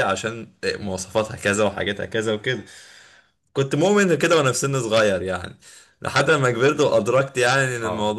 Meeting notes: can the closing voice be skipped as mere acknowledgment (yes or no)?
yes